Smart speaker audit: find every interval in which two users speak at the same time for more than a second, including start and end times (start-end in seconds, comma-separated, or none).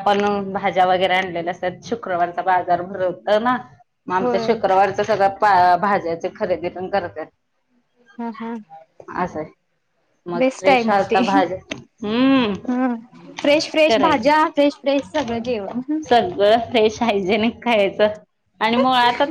none